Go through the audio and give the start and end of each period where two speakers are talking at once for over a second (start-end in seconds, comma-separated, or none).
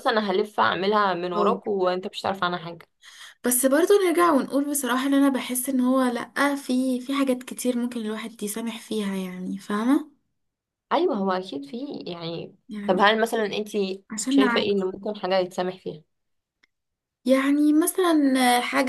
none